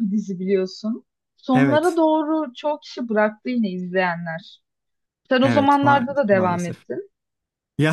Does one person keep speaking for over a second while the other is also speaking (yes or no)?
yes